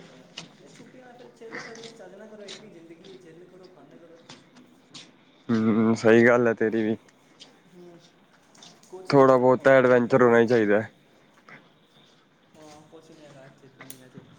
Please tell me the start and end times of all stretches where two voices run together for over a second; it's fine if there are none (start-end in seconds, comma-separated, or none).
9.1-10.3